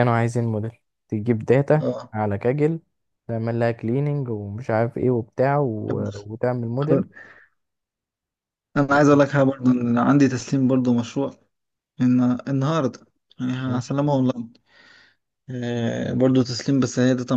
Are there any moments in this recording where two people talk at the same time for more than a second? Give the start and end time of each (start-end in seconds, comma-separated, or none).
none